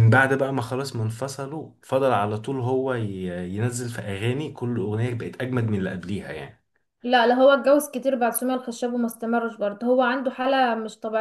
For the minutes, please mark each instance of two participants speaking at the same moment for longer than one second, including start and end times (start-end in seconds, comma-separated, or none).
none